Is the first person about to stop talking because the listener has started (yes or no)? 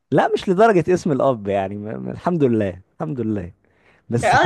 yes